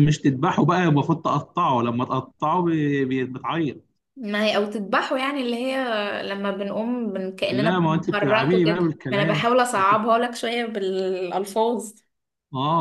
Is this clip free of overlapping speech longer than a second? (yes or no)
no